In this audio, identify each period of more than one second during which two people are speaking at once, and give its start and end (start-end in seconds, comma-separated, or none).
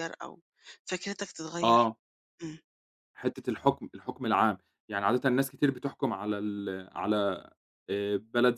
none